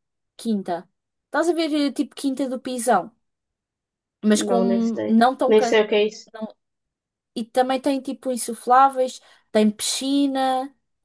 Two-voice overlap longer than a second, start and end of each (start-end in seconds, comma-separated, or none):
4.3-5.8